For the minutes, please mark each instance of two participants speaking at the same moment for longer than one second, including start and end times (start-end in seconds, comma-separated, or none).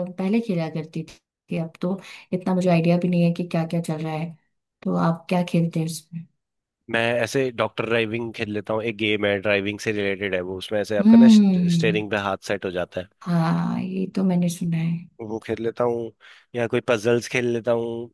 11.0-12.2